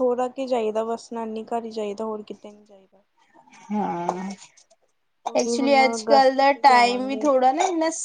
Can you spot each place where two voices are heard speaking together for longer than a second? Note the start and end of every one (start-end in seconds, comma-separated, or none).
5.4-7.3